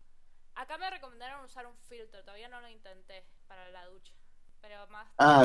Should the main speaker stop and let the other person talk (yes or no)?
yes